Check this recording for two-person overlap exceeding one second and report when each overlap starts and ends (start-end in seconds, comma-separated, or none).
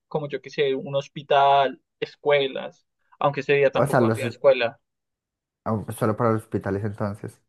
none